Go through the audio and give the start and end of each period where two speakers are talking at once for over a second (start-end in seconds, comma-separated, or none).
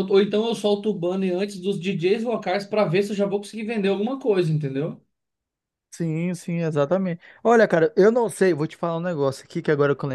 none